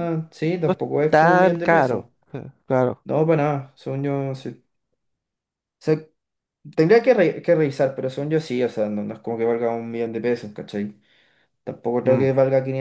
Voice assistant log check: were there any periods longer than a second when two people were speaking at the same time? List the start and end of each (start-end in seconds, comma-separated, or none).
0.7-2.0